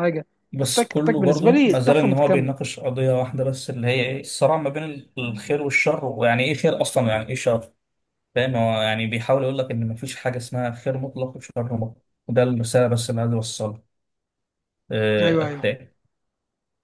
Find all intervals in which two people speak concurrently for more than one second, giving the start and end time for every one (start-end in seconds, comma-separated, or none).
0.6-2.5